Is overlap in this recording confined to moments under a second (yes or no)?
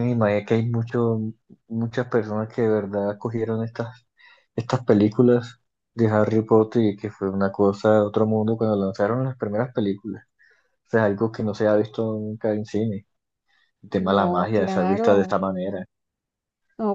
no